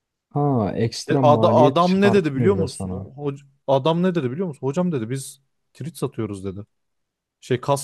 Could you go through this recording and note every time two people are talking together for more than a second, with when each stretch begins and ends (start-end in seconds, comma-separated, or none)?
1.1-3.1